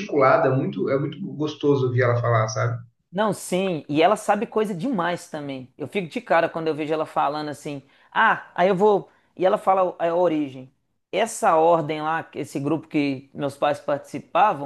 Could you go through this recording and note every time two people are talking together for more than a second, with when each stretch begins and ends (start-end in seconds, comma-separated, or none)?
none